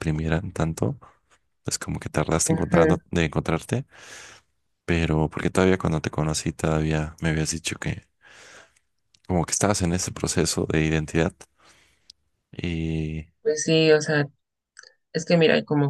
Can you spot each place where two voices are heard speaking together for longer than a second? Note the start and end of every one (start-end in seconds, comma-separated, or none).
none